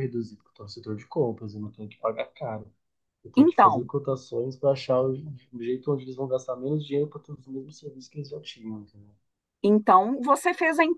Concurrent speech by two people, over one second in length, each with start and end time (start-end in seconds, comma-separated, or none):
none